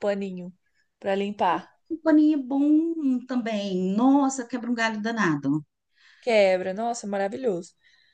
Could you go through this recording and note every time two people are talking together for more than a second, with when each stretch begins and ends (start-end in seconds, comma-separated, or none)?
none